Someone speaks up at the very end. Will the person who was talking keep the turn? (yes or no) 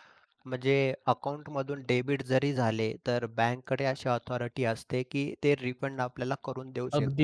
no